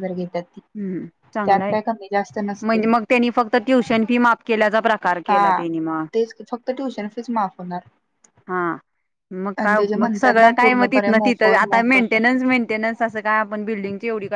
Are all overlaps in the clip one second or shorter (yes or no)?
no